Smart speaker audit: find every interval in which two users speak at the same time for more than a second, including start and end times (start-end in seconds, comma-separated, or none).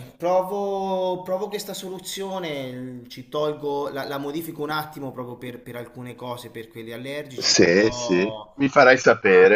7.3-8.6